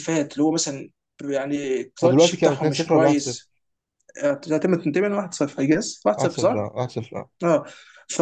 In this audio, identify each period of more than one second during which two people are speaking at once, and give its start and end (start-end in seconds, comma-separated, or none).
2.0-3.4